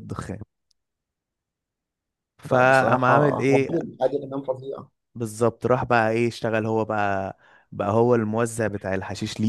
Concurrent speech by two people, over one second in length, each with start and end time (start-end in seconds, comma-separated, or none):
2.5-3.7